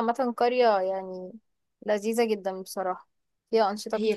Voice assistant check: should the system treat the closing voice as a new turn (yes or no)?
yes